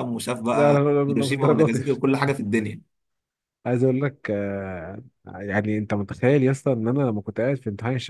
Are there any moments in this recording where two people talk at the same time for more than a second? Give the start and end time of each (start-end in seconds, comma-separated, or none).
0.5-2.3